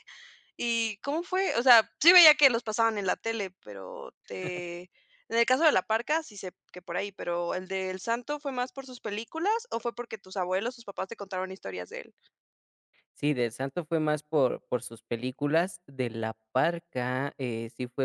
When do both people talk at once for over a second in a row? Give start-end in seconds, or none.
none